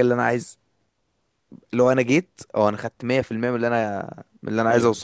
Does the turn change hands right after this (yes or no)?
yes